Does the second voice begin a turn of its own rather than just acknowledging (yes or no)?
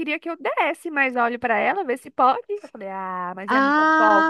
yes